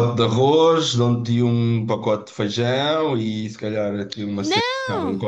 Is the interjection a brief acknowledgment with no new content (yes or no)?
yes